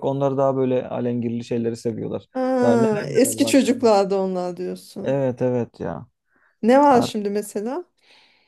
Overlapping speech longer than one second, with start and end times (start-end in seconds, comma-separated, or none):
2.6-3.9